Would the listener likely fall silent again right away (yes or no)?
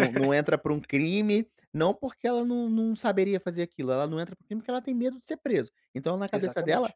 yes